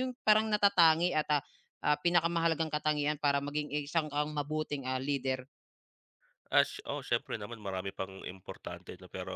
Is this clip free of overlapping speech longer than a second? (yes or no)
yes